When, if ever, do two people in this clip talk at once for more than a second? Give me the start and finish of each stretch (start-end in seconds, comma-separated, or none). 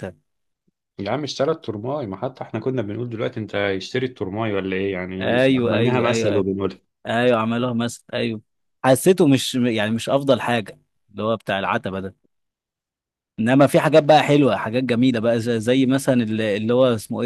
5.2-6.5